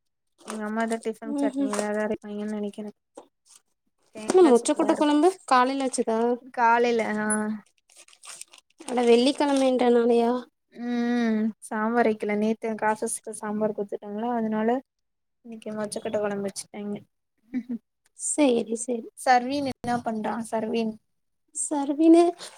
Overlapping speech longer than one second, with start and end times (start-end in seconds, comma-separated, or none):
none